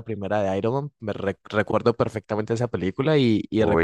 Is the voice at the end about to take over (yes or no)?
no